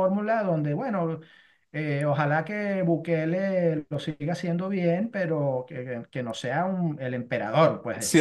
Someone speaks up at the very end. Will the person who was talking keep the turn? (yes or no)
no